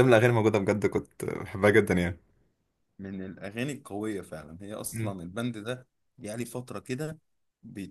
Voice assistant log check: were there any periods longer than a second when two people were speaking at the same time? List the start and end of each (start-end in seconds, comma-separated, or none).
none